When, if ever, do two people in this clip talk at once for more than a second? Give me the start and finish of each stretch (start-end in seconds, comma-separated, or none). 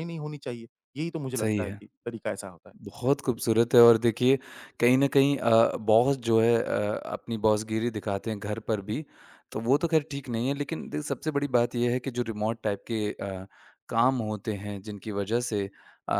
none